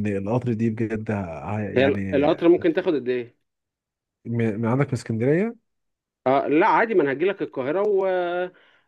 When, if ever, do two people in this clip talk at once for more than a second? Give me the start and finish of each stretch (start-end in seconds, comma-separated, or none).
none